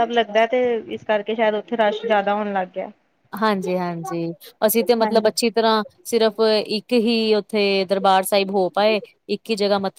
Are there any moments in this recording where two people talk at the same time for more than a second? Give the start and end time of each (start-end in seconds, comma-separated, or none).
none